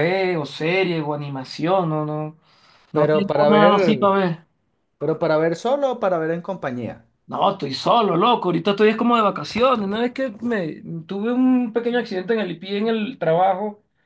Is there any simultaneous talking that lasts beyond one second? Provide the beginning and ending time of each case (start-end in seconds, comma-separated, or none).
2.9-4.2